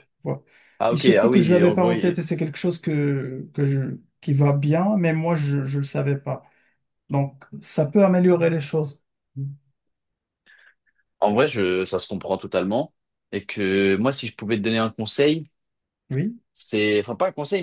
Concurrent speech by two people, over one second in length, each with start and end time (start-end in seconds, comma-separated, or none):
0.9-2.2